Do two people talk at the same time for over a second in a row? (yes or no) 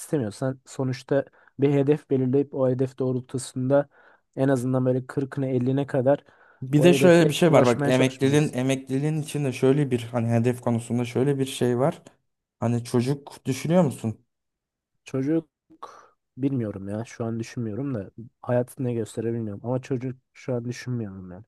yes